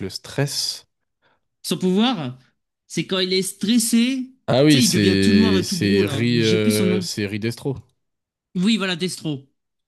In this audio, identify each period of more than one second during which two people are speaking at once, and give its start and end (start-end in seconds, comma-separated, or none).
4.7-7.1